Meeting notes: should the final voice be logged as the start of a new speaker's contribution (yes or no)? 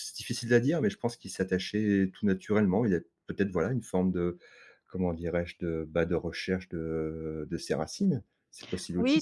yes